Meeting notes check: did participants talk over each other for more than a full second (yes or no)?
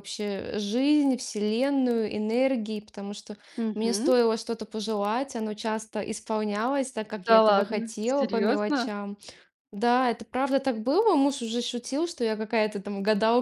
yes